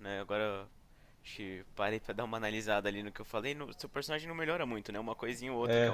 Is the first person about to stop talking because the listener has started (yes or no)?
no